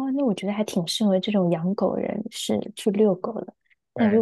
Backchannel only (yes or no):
yes